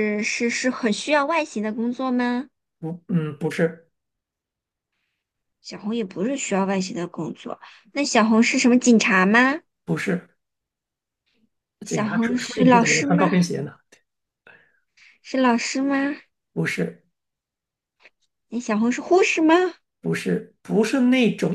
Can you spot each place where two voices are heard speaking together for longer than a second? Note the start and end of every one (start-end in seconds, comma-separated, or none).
11.9-13.2